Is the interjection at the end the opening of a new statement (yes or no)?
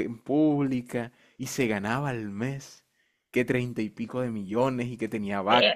no